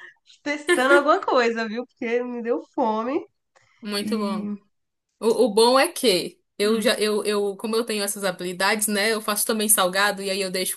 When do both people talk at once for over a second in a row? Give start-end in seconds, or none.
none